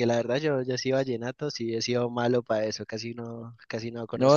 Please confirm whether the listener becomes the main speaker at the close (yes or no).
yes